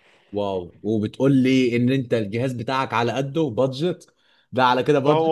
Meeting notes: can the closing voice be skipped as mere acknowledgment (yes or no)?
no